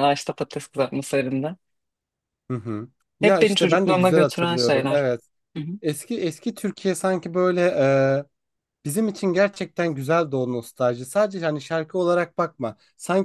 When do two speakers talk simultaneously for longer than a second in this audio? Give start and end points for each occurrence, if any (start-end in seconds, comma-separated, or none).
3.2-5.0